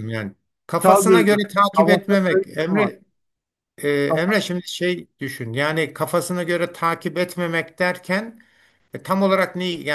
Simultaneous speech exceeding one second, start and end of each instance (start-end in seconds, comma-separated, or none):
0.8-2.9